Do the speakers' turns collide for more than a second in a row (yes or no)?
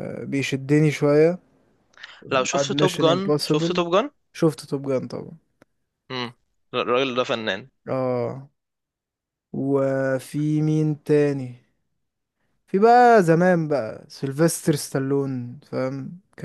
yes